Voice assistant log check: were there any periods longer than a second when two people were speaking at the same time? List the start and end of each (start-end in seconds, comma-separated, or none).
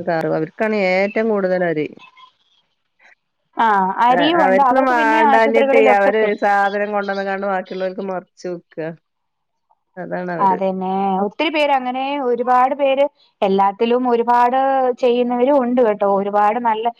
4.5-6.3